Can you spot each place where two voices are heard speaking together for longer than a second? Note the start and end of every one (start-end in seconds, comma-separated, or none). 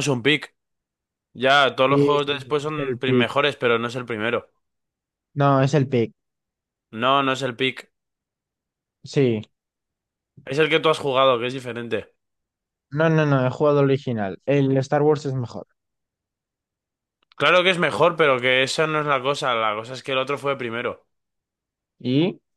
1.9-3.3